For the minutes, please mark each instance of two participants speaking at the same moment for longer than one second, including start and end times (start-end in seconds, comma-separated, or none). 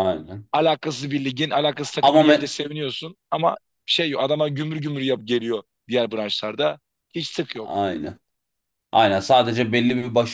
none